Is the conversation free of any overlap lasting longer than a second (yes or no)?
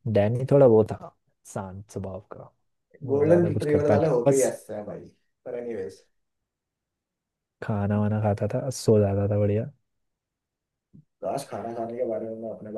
no